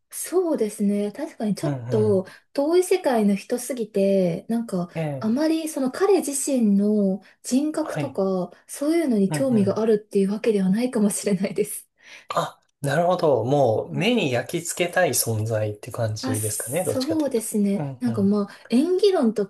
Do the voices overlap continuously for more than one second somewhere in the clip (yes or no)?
yes